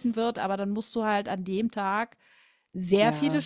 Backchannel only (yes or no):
yes